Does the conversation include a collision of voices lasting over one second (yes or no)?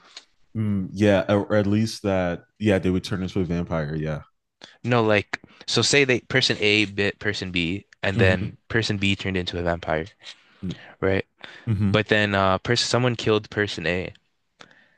no